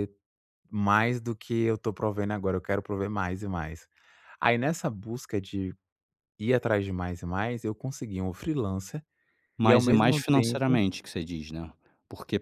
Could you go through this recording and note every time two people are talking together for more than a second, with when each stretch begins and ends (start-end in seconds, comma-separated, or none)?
9.6-10.8